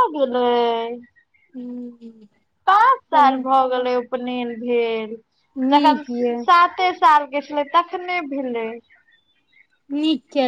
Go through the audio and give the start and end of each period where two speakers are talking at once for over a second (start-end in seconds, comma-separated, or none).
none